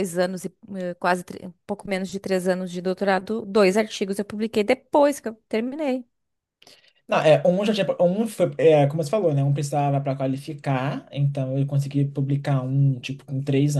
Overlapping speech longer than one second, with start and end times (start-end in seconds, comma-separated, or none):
none